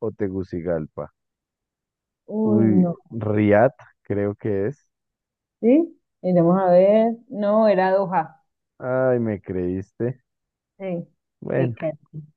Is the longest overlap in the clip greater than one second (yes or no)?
no